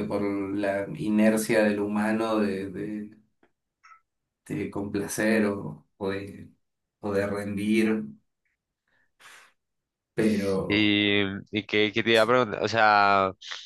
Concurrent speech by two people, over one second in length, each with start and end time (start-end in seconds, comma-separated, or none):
none